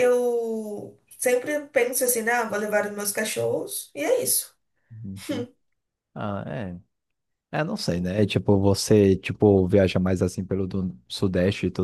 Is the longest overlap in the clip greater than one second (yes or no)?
no